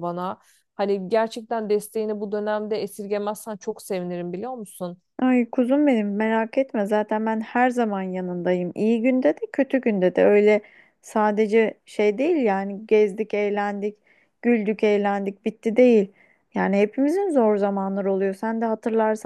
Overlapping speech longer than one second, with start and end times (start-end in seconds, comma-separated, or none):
none